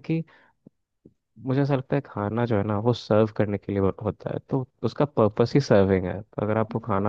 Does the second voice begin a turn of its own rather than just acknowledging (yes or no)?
no